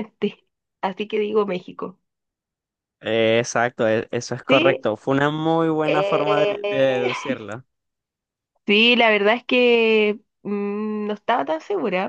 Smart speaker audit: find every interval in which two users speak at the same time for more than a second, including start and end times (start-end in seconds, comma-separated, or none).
5.8-7.1